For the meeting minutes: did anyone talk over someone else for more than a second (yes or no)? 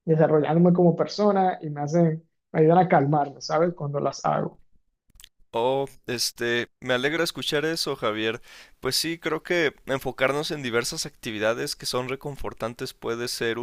no